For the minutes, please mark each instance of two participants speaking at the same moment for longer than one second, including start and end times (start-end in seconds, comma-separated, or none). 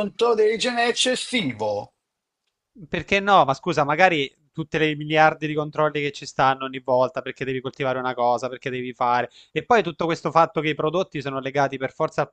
none